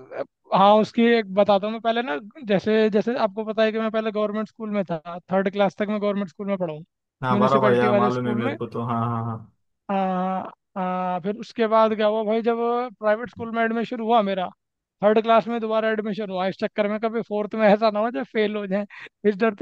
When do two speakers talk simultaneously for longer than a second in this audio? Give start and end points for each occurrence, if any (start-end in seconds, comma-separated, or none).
7.3-8.6